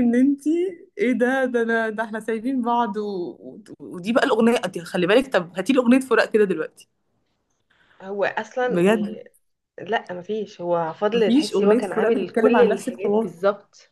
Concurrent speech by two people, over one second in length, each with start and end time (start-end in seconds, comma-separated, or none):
11.1-13.3